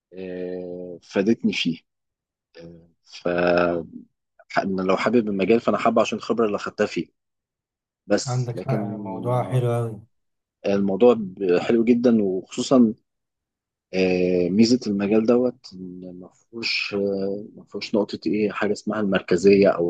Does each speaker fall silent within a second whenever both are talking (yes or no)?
no